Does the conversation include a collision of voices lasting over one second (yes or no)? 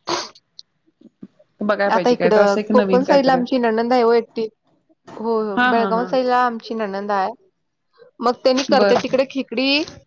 yes